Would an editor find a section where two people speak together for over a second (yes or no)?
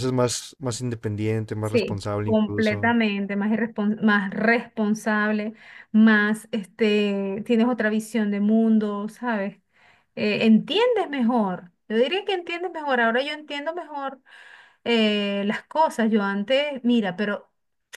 yes